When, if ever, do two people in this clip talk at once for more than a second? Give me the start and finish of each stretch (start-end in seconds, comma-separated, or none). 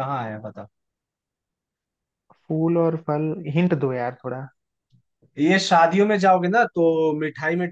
none